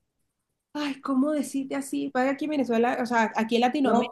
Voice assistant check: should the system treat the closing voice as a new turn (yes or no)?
yes